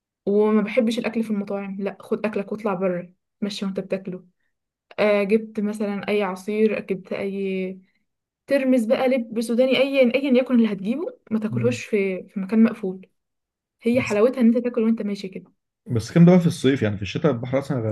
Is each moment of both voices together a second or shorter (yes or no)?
yes